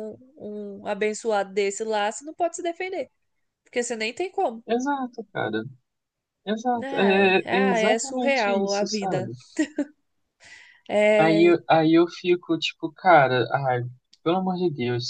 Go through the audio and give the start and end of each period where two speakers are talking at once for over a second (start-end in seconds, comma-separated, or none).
6.9-9.3